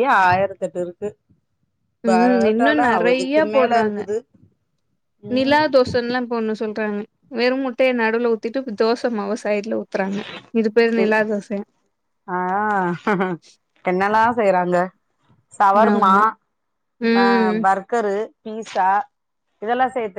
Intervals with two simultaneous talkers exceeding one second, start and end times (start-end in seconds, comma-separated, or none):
2.1-4.0